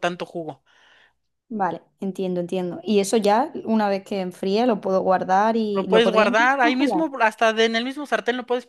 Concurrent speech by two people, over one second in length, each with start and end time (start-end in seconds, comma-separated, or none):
5.7-7.0